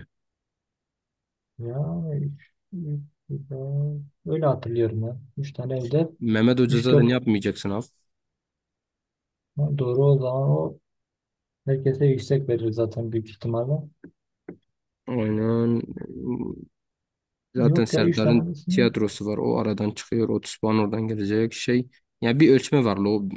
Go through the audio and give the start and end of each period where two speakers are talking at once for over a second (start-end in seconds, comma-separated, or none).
17.6-18.9